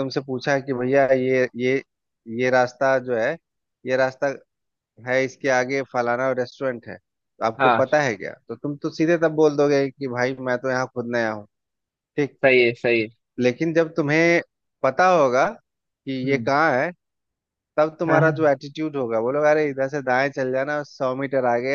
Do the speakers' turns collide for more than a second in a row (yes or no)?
no